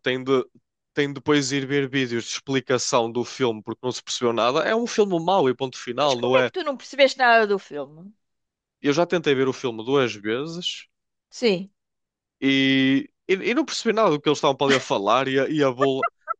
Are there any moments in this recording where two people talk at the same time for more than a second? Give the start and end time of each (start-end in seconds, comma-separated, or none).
none